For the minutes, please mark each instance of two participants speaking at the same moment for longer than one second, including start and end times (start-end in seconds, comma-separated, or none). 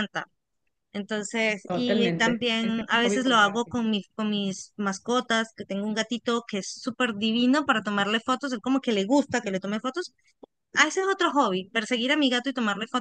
1.6-3.8